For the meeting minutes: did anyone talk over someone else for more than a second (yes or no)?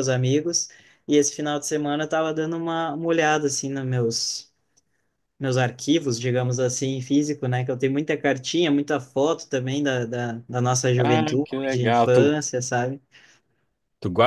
yes